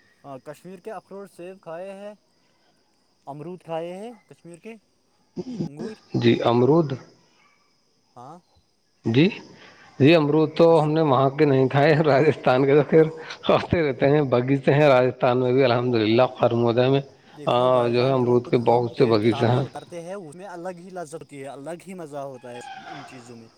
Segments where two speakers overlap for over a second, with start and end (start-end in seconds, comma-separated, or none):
18.1-19.6